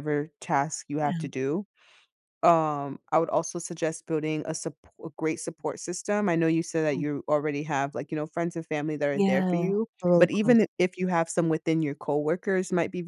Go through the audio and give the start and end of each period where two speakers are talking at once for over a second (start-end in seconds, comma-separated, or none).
9.2-10.7